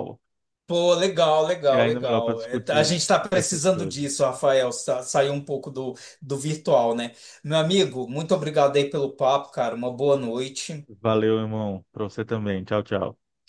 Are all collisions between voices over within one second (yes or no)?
no